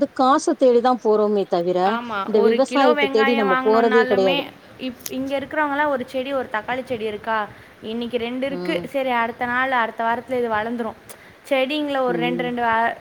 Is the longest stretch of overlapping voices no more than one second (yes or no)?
no